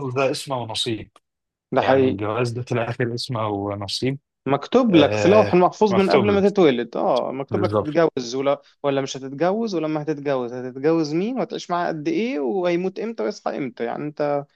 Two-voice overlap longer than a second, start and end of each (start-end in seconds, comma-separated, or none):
4.9-6.4